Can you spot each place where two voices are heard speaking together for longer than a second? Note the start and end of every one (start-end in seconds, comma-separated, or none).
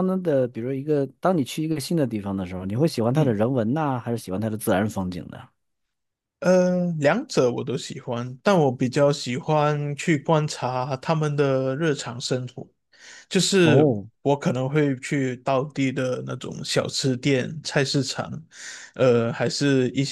none